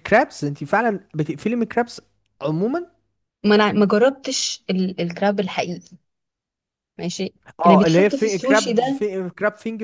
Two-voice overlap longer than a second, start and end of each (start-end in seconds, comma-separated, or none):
7.6-9.1